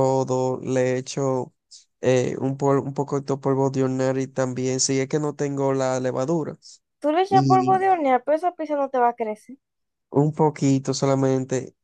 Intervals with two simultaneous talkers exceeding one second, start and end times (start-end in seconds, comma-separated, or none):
none